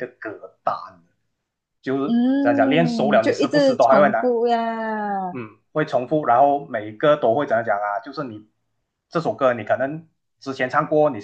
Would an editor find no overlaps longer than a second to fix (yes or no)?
no